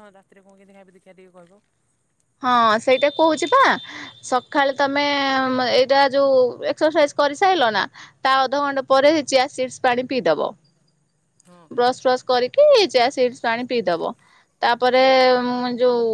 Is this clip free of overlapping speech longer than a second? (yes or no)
yes